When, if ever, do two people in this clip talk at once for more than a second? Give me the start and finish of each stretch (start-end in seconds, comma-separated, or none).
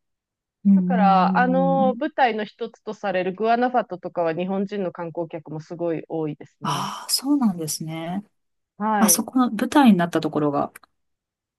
0.8-1.9